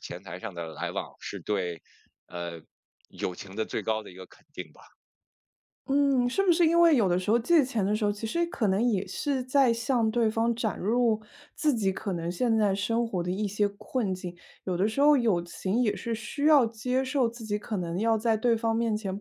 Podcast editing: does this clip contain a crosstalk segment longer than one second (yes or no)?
no